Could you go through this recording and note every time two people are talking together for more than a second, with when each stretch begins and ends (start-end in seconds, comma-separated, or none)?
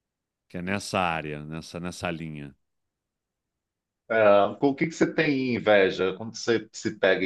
none